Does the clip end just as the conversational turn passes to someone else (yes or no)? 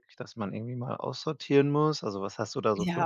yes